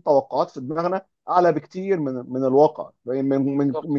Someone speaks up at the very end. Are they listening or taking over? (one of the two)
listening